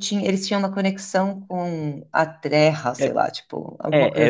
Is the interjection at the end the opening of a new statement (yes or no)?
yes